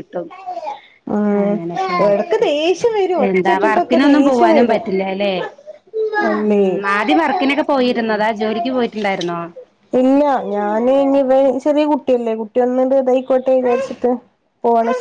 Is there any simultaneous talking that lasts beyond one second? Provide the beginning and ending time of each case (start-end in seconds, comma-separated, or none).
3.3-4.9